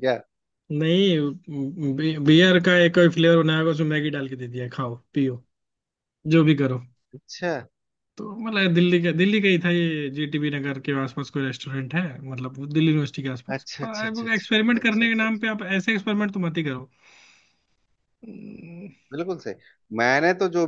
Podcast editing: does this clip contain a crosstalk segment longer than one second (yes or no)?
yes